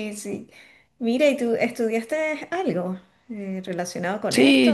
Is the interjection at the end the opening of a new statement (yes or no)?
yes